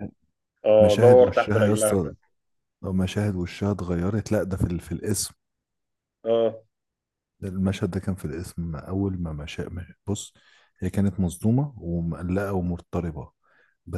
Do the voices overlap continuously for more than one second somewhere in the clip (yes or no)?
yes